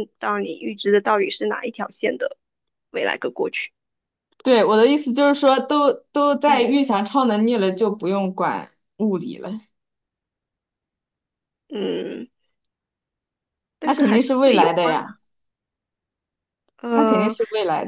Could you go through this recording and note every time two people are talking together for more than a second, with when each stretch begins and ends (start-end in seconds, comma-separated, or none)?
13.8-15.2